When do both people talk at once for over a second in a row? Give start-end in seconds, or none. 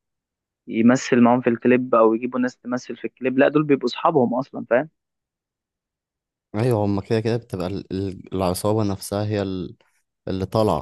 none